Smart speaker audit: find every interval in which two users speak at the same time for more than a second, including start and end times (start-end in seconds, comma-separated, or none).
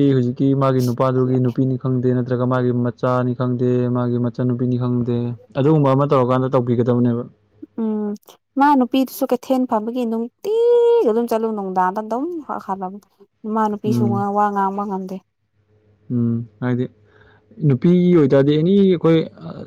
none